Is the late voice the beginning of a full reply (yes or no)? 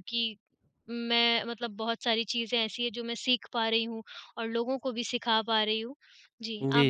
yes